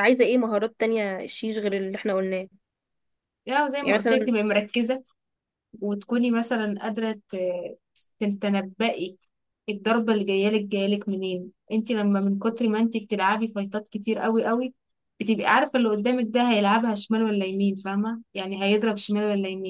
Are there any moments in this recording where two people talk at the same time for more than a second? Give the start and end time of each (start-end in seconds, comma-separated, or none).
none